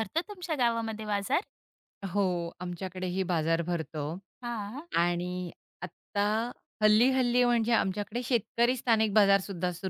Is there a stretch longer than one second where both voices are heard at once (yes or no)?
no